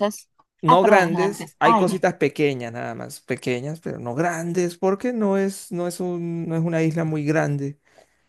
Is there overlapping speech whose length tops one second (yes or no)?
yes